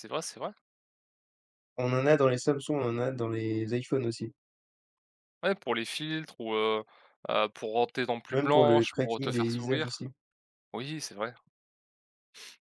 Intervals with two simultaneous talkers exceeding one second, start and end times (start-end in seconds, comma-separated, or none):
8.3-10.1